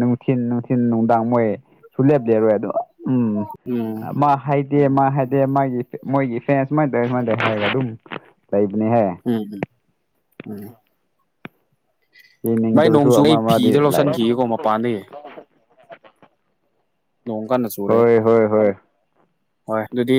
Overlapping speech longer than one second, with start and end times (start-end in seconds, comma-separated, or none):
12.8-14.4